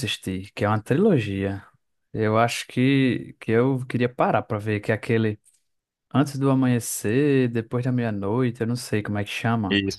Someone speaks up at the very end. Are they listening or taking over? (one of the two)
taking over